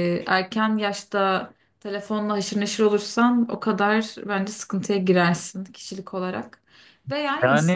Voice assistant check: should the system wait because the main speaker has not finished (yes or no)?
no